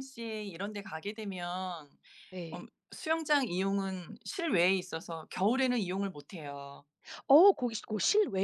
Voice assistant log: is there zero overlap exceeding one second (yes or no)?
yes